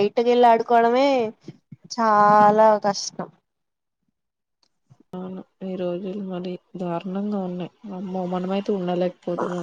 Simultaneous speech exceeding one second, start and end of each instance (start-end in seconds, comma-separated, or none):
none